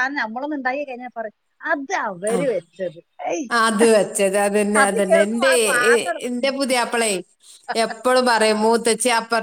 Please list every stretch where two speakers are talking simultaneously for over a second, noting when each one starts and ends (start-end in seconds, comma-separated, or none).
none